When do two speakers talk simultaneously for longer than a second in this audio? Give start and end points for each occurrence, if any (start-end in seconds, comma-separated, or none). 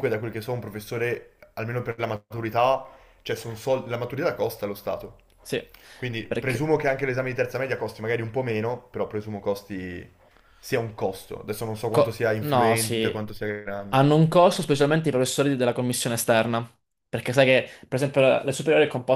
11.9-13.1